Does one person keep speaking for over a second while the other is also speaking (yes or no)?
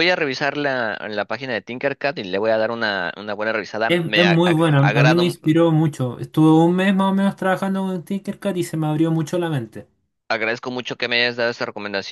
yes